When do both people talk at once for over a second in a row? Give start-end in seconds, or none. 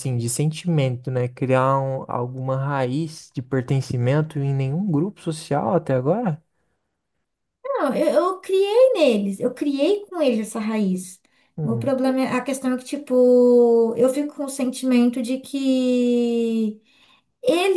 none